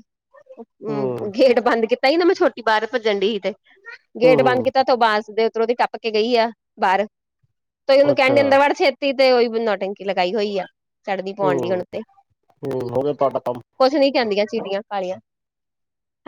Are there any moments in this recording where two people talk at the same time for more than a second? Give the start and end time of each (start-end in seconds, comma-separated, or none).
none